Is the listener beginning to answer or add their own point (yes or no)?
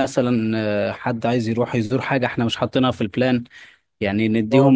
yes